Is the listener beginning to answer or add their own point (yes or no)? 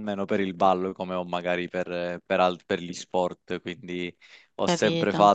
no